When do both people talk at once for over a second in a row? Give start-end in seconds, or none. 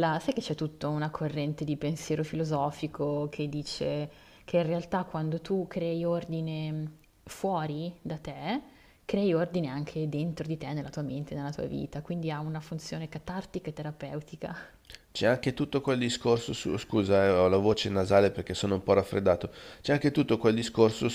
none